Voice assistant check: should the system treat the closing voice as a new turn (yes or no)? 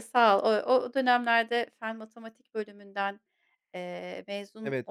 yes